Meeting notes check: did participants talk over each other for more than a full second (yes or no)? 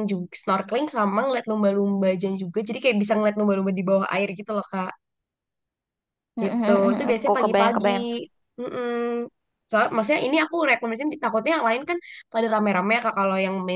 yes